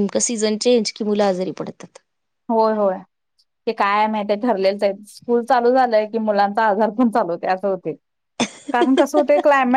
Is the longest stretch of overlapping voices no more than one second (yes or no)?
yes